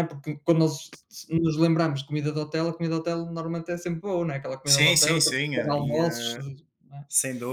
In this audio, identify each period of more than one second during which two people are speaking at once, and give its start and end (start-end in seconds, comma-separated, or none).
4.7-6.3